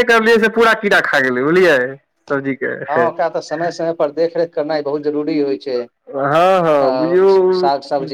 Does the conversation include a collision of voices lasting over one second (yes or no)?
no